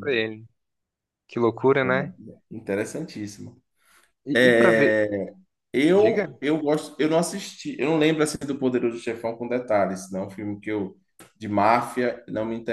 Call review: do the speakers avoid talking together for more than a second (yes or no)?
yes